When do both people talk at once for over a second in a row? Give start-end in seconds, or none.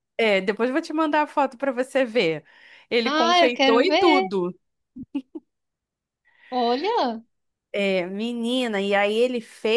3.0-4.3